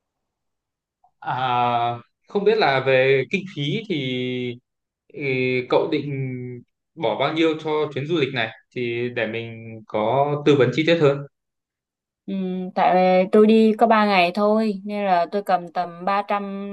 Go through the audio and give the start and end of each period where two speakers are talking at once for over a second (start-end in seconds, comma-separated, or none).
none